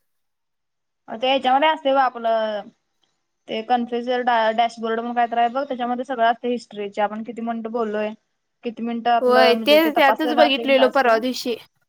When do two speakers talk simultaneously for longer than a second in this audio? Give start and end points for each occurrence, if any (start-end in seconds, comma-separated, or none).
9.2-11.1